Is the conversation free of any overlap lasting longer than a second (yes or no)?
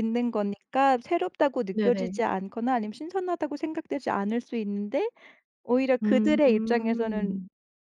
no